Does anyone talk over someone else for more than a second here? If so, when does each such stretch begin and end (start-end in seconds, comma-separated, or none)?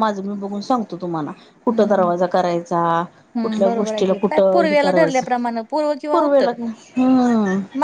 3.4-5.2